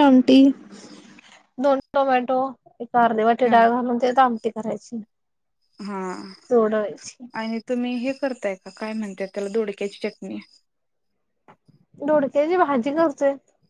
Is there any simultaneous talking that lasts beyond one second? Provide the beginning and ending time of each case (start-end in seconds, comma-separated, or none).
none